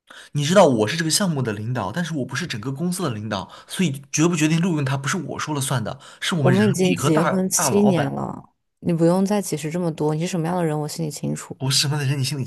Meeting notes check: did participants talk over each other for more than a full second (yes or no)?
yes